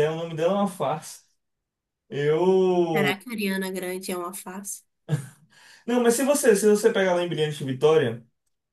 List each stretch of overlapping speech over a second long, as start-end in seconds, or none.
none